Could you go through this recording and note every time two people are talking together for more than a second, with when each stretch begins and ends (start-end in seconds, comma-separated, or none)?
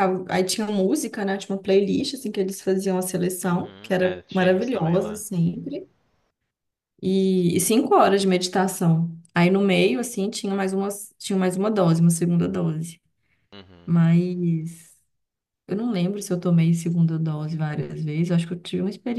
3.4-5.2